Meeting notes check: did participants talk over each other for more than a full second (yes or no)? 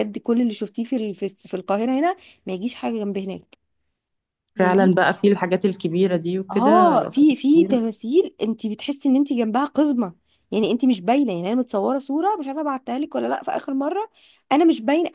yes